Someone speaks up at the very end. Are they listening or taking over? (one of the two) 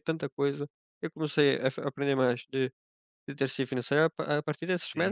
listening